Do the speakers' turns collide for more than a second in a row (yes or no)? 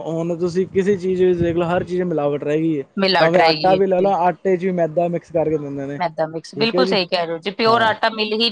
no